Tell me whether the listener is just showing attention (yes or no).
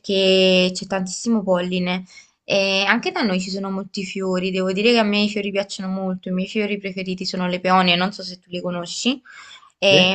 yes